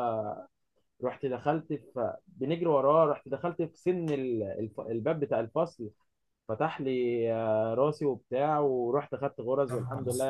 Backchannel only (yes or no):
yes